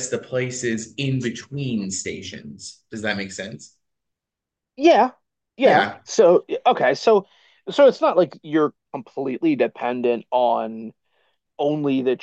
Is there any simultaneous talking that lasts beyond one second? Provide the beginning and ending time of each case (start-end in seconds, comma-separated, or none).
none